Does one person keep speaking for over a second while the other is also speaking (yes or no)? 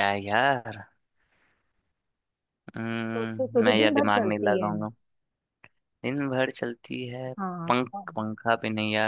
yes